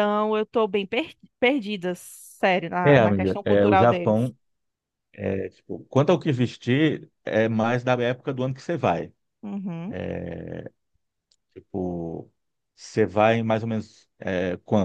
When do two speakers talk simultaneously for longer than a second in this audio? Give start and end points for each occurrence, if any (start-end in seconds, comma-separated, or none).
2.8-4.3